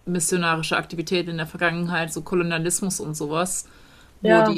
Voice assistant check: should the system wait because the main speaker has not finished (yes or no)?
yes